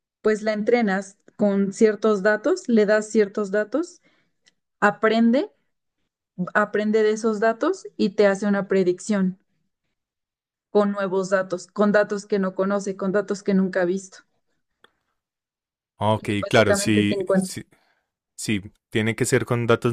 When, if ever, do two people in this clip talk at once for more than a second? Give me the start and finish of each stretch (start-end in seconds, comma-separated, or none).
16.2-17.5